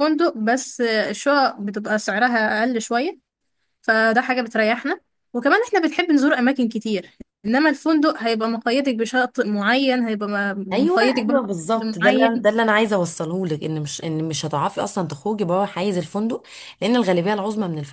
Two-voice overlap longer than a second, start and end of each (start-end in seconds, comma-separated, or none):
10.7-12.5